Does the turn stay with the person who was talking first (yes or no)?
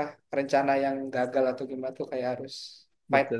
no